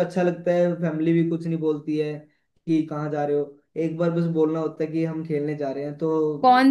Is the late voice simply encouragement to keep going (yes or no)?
no